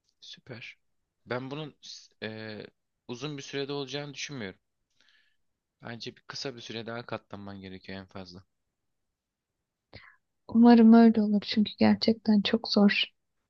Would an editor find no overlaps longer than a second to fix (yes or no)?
yes